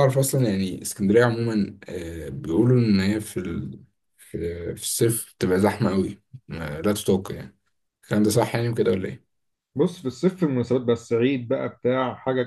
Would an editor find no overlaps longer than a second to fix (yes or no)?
yes